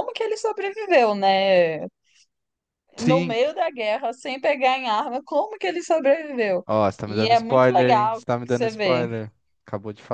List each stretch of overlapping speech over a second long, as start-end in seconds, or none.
7.0-9.1